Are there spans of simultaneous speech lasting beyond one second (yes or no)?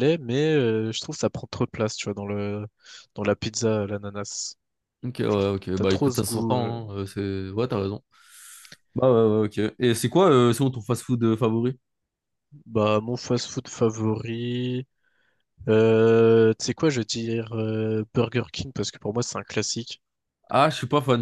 yes